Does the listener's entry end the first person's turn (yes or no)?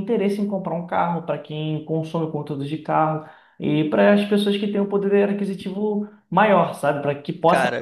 yes